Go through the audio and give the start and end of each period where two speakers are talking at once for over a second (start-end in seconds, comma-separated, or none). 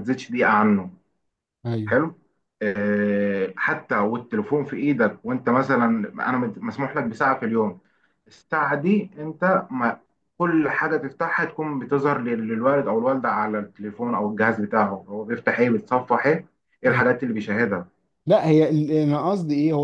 none